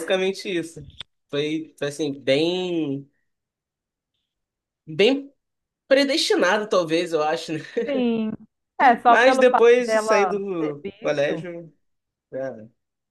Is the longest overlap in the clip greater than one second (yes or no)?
yes